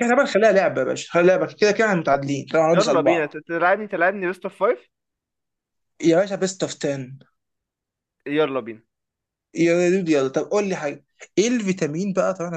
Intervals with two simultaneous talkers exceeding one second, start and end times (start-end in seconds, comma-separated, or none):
none